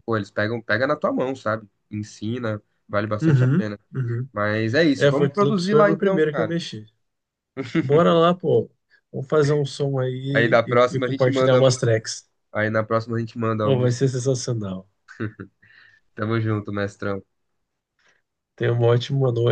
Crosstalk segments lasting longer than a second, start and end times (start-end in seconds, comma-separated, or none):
5.0-6.6, 10.3-11.9